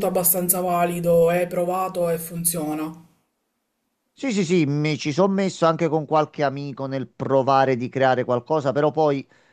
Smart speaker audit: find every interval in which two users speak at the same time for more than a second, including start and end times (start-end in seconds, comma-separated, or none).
none